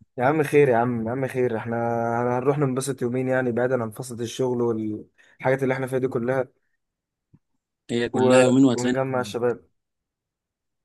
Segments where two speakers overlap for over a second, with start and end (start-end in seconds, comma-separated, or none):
8.1-9.5